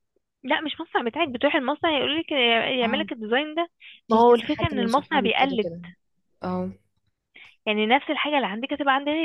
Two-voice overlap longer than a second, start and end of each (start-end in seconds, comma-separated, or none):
4.1-5.7